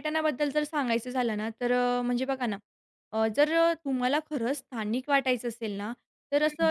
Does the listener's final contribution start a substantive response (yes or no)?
no